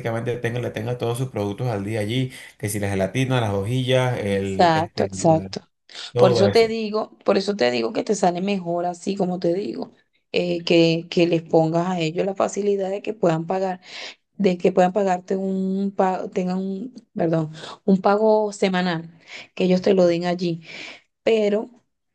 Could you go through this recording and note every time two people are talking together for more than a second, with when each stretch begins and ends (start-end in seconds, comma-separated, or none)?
4.2-5.5